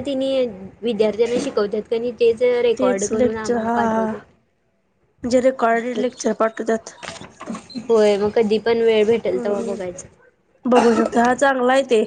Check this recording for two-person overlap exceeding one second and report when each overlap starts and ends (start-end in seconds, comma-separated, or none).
2.8-4.0